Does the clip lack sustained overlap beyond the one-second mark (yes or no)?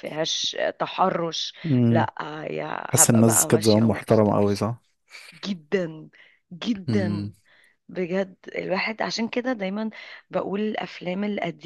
no